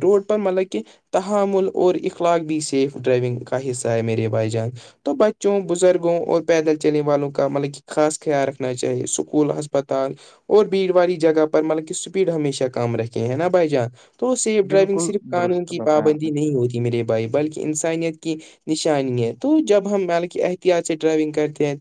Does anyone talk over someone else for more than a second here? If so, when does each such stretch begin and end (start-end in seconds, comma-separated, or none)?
14.7-16.3